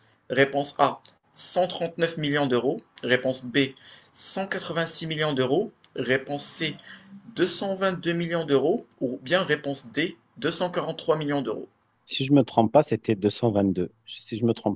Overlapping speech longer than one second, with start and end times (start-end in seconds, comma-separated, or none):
none